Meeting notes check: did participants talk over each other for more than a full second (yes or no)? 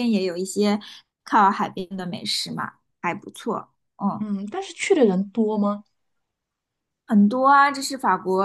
no